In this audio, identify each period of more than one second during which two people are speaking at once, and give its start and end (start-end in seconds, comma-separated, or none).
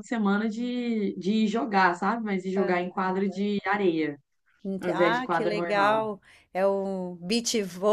4.8-6.1